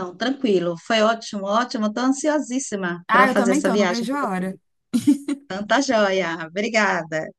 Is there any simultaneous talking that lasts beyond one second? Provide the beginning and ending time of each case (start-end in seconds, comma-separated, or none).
3.1-4.4